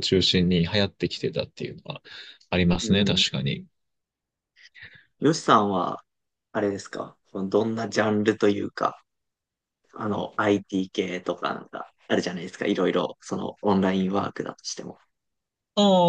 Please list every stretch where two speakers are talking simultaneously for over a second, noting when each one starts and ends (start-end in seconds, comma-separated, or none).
none